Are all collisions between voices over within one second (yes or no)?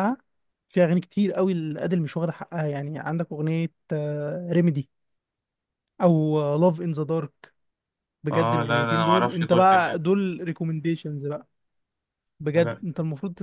no